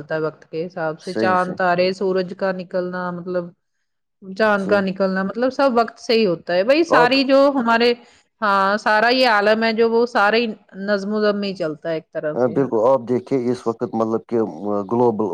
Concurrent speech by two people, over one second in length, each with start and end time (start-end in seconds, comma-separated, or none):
none